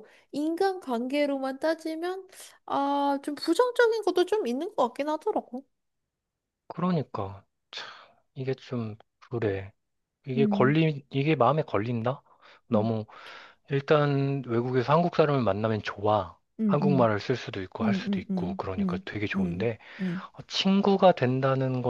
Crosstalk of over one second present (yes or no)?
yes